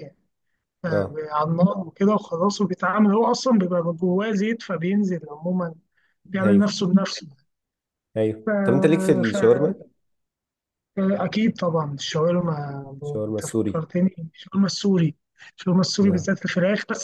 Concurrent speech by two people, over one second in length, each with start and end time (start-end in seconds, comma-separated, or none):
none